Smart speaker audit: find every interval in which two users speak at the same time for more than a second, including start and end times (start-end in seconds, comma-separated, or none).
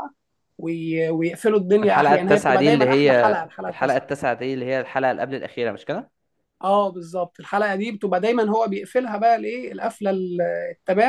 1.8-4.0